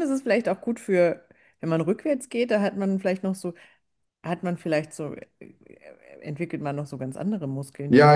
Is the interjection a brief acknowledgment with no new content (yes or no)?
no